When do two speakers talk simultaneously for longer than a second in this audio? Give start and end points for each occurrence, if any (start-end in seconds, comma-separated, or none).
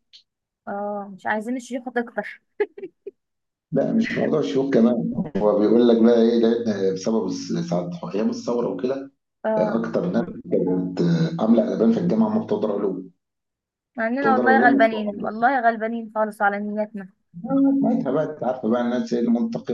14.2-15.4